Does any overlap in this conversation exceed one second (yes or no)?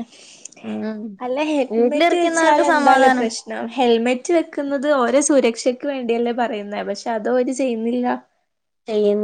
yes